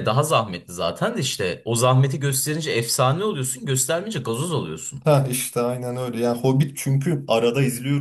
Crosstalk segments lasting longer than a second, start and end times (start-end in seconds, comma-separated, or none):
none